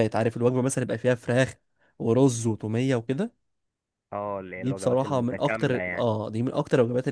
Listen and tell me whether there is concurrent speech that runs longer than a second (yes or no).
yes